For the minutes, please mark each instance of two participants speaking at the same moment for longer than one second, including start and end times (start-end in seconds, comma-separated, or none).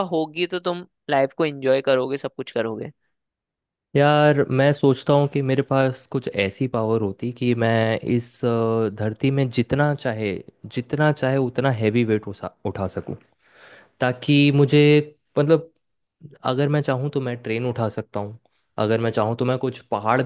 none